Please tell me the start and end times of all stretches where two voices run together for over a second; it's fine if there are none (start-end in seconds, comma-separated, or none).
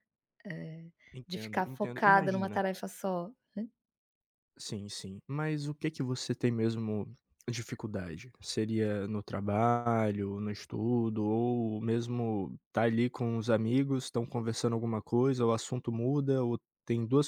1.1-2.6